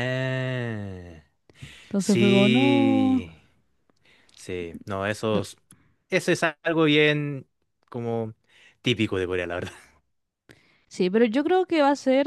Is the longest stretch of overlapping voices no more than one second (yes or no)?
no